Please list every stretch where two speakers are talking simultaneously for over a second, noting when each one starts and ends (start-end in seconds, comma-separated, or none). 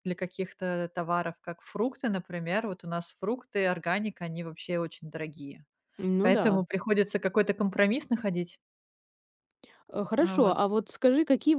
none